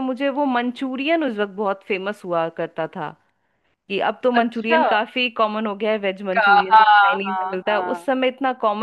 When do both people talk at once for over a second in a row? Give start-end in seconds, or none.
6.3-8.1